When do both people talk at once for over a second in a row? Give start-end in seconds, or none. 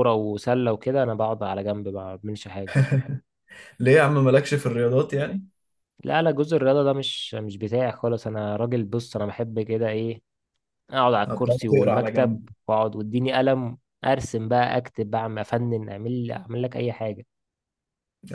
11.3-12.5